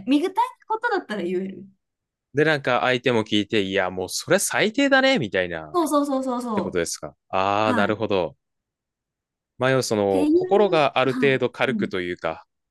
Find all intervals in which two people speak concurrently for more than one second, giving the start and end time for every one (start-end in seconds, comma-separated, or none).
10.1-12.0